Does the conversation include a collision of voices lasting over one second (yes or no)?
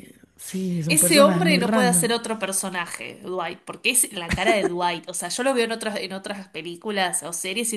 yes